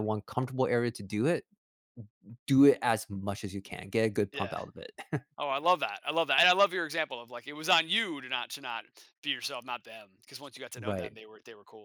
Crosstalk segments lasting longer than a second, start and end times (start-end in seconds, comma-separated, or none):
none